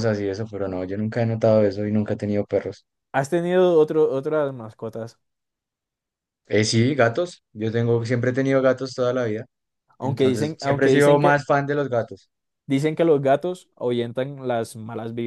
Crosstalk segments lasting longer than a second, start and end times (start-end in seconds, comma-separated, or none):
10.0-11.4